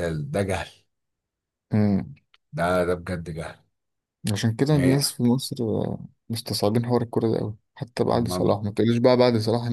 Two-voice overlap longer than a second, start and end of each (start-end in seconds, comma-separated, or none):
none